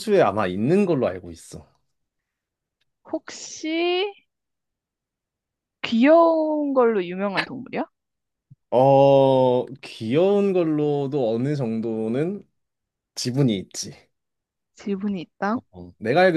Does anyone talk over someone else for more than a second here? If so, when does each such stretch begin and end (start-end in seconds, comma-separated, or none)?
none